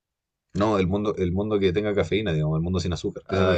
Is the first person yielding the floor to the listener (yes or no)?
yes